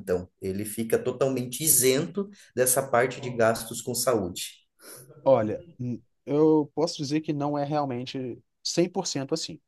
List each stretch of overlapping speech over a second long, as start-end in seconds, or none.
none